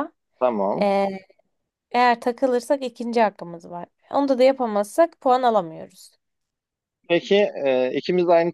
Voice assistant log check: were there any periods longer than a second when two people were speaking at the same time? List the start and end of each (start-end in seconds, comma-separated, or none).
none